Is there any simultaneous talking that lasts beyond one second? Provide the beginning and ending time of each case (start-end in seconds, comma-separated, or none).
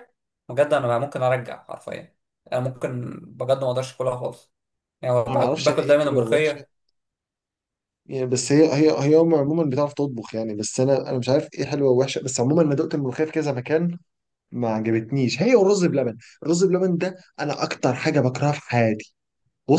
5.3-6.6